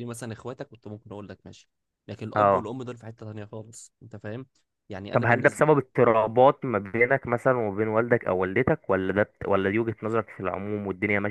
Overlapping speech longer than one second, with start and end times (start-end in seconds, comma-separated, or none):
none